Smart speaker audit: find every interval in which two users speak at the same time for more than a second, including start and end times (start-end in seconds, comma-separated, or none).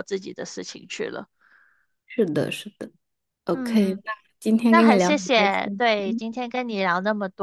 4.7-6.2